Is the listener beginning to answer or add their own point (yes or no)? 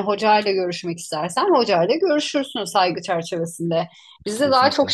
no